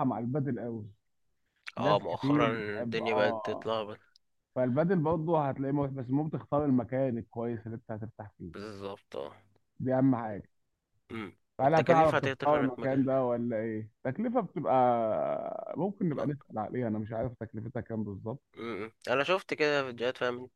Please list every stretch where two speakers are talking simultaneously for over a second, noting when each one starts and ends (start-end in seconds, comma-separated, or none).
1.8-3.7, 11.6-13.1